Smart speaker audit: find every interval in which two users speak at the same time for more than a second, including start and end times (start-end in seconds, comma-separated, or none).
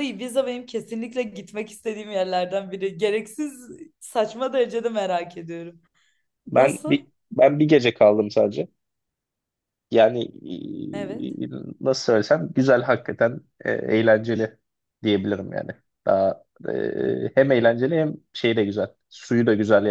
none